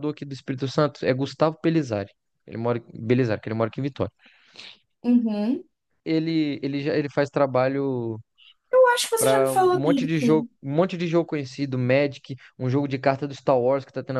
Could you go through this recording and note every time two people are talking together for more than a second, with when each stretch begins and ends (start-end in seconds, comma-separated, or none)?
9.2-10.5